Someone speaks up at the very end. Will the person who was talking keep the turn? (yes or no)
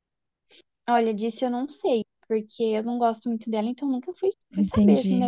no